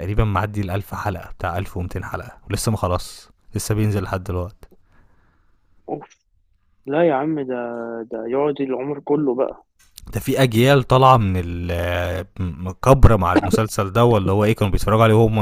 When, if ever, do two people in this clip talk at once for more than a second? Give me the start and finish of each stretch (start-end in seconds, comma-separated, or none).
none